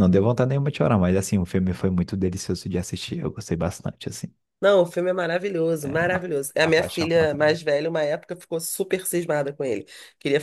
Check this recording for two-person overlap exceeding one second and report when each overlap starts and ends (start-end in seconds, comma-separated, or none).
6.1-7.6